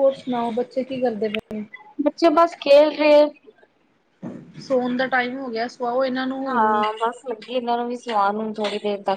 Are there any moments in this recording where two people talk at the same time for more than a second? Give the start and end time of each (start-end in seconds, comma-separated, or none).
none